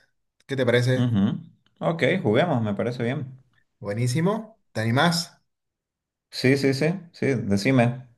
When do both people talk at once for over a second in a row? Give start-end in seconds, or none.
none